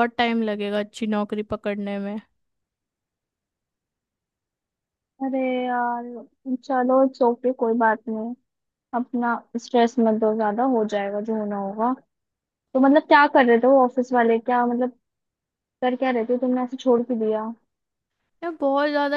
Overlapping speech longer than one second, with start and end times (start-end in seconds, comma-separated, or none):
none